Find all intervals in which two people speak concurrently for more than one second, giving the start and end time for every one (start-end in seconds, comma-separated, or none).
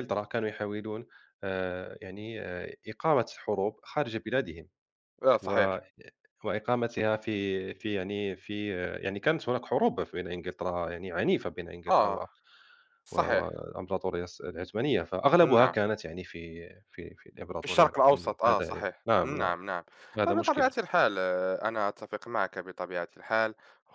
17.6-19.6